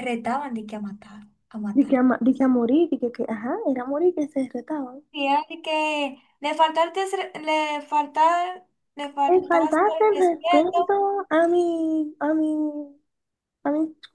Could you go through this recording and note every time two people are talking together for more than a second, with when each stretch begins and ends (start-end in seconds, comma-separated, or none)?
9.3-10.8